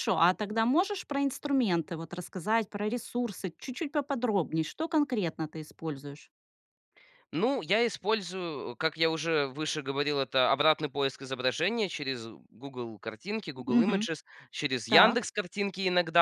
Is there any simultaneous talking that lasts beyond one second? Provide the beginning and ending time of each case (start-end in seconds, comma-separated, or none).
none